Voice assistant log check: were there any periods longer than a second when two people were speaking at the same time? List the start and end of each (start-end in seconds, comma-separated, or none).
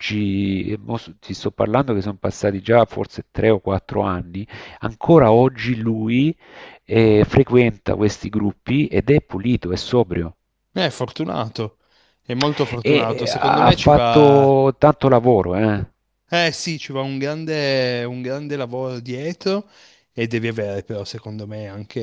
12.8-14.5